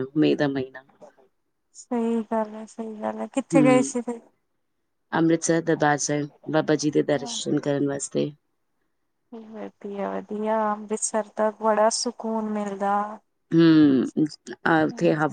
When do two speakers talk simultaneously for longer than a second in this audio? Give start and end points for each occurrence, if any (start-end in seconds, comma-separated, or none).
none